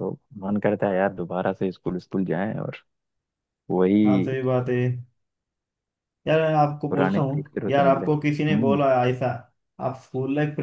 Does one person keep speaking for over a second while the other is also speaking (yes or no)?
yes